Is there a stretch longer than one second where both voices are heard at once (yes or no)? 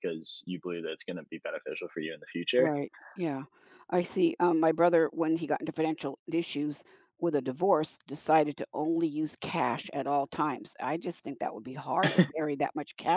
no